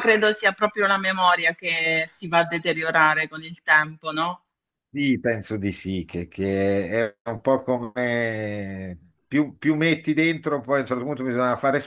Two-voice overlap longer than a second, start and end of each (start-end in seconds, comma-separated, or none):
none